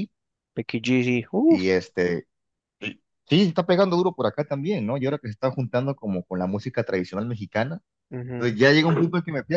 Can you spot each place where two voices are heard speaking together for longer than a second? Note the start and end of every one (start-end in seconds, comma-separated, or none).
none